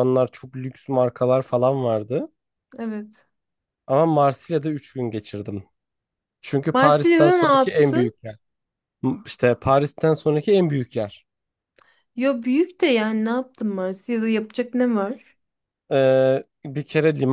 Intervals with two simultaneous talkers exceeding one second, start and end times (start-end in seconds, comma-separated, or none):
6.7-8.2